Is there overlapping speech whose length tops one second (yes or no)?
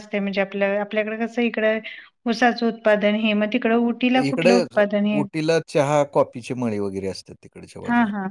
no